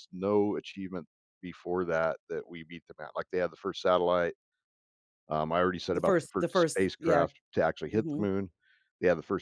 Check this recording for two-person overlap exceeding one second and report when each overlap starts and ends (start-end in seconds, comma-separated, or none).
5.9-7.3